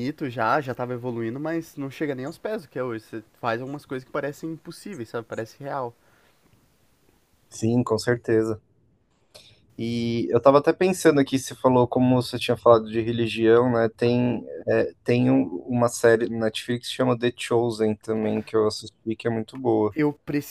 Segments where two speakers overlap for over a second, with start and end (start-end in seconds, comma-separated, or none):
none